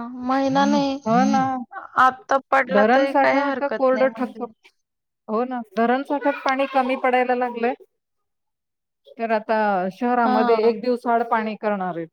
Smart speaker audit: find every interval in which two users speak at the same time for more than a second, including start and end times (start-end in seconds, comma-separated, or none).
2.7-4.4